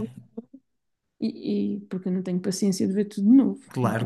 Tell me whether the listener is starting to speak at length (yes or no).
yes